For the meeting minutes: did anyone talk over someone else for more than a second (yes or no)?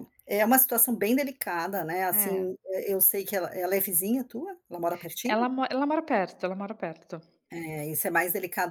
no